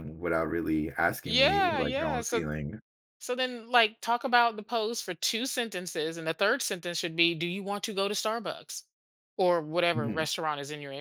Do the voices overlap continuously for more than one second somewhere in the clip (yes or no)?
yes